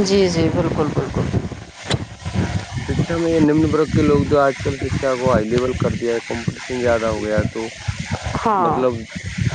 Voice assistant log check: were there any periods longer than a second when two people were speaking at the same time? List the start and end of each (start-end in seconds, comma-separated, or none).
none